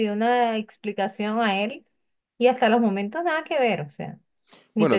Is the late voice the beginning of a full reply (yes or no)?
yes